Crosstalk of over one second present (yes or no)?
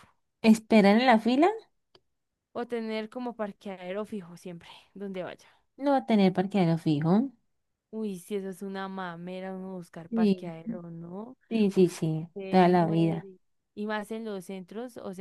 yes